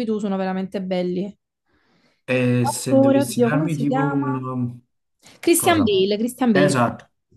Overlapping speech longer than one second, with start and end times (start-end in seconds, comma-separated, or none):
2.6-4.3